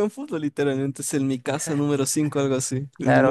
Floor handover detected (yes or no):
yes